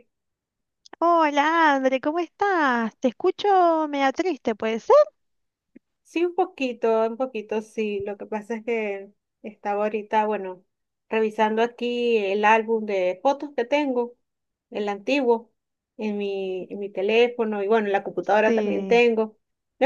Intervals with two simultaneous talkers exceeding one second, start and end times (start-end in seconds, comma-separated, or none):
none